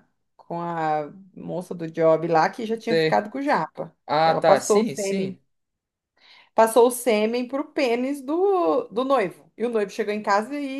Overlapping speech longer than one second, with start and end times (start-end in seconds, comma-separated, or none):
4.0-5.4